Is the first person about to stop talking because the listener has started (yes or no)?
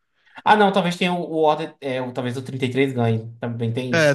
yes